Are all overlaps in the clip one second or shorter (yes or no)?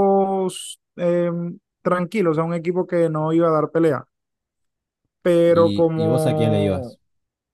no